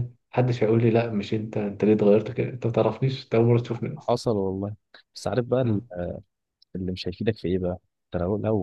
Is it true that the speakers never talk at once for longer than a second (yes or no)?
yes